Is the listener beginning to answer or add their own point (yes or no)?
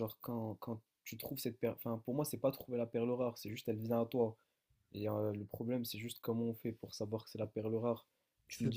no